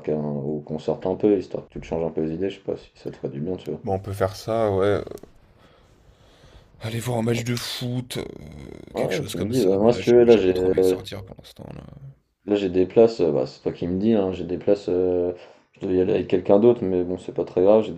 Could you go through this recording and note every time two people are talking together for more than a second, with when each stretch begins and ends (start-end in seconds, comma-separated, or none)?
9.0-10.5